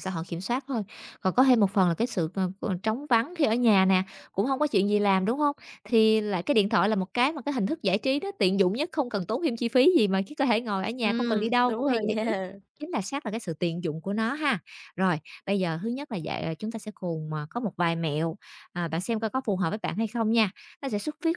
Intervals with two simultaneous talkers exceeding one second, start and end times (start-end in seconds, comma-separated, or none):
11.0-12.3